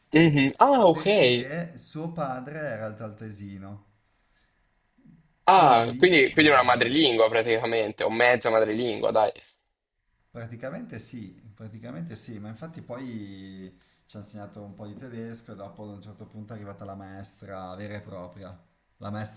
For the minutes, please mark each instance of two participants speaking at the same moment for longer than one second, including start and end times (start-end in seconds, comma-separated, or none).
5.5-7.1